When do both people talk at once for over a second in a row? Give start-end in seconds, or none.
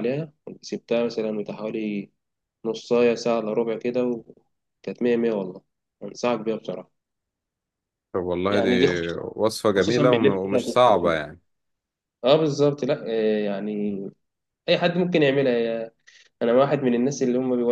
9.8-11.2